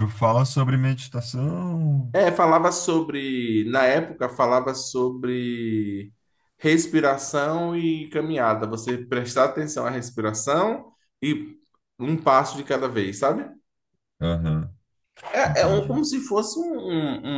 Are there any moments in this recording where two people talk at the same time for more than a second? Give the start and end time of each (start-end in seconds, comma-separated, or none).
none